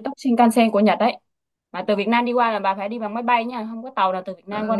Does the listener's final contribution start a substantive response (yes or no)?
yes